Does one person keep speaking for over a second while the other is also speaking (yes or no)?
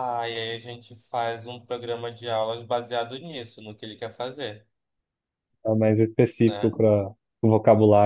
no